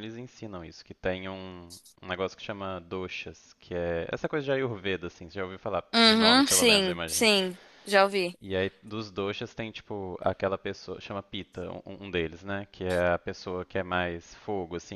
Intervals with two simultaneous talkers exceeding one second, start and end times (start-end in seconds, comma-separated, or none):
5.9-7.3